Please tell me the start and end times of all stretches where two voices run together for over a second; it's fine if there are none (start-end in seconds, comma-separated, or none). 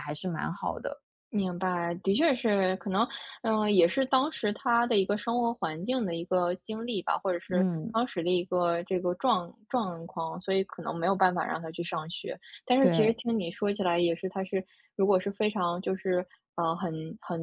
none